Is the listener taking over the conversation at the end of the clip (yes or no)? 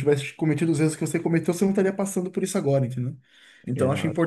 no